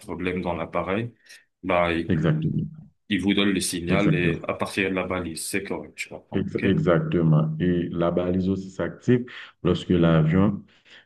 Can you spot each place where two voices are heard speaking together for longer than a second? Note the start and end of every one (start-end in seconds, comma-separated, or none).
none